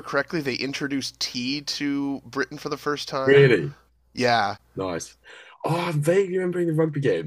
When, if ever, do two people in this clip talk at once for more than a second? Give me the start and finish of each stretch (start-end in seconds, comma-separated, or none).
none